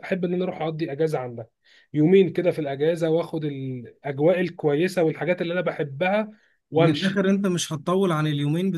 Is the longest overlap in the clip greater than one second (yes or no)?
no